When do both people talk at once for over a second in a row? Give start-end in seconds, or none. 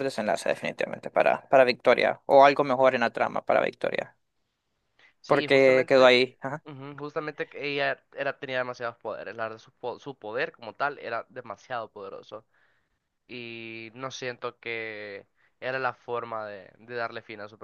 5.2-6.6